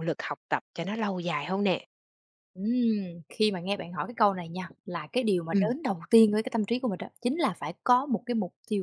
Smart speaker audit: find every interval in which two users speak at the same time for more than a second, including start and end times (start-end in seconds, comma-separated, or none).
none